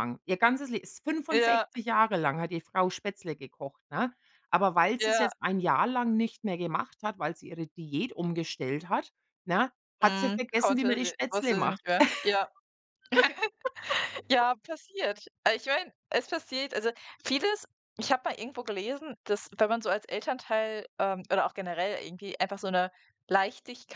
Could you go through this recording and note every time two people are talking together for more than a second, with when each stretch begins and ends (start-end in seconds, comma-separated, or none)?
10.0-11.8